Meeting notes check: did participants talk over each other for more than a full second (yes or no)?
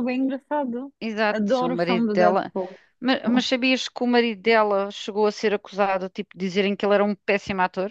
yes